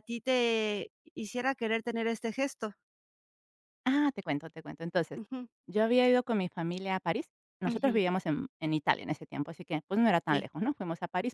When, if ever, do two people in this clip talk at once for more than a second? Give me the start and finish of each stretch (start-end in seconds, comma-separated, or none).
none